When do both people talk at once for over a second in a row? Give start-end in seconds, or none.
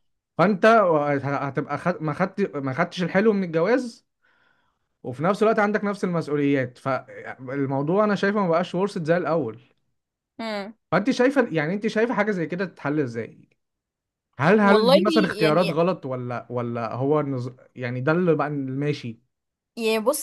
14.5-15.8